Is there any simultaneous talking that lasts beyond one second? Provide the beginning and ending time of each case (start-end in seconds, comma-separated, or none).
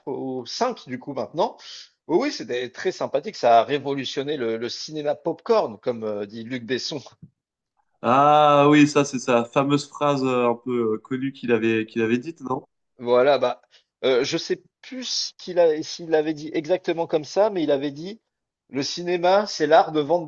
none